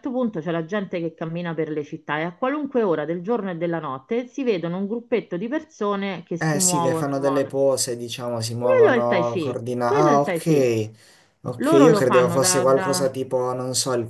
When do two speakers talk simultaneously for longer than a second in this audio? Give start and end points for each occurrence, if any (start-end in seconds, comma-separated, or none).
6.4-7.6, 8.6-10.7, 11.6-13.1